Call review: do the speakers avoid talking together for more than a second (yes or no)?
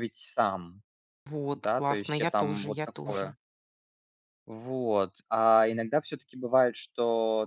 no